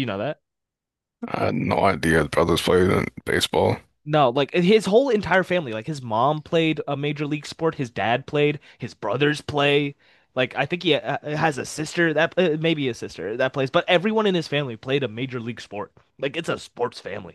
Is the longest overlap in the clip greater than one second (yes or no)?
no